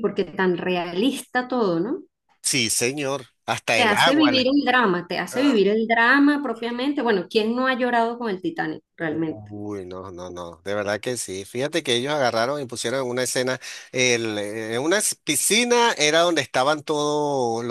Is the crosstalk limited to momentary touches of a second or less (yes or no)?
yes